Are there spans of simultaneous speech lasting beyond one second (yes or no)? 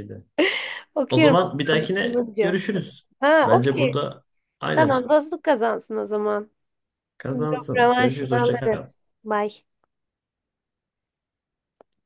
yes